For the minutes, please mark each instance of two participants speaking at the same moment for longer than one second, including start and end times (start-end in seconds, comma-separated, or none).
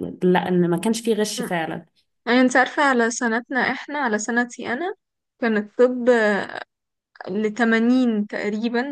none